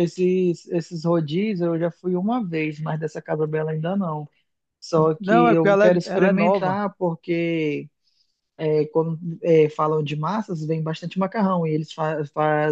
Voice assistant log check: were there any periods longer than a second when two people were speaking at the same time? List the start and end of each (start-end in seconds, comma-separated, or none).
5.2-6.8